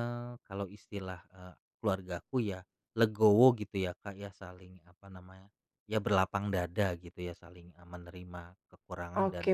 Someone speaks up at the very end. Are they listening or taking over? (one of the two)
taking over